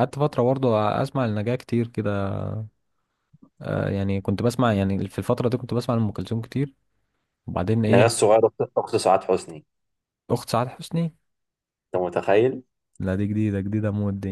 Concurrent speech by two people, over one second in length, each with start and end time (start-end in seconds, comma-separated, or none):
none